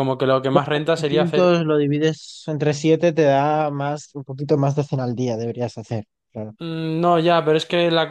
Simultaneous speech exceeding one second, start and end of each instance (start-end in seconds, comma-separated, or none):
0.5-1.7